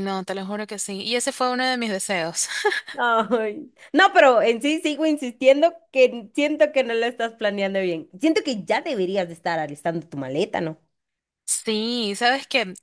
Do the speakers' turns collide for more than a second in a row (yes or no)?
no